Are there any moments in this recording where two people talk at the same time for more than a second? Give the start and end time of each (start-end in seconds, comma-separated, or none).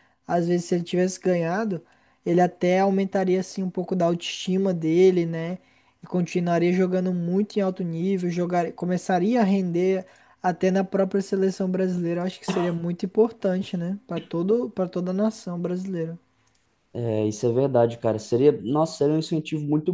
none